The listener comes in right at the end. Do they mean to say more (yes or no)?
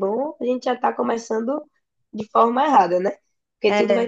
no